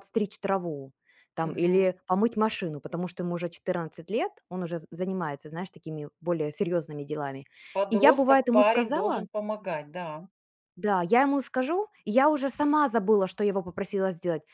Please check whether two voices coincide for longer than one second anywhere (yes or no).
yes